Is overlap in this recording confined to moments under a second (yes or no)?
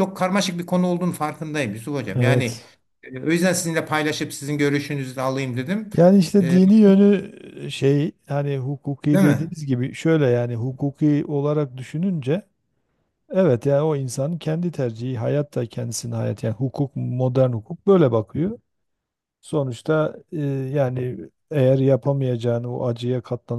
yes